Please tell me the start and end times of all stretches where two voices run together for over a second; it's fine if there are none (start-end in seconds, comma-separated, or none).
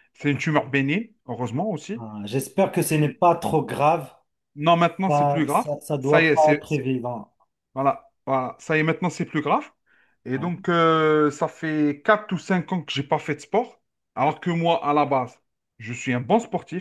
5.1-6.6